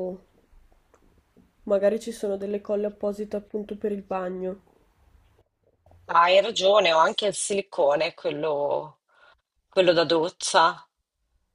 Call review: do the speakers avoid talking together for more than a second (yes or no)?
yes